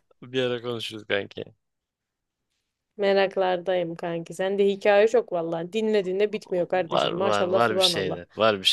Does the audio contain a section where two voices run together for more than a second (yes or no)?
yes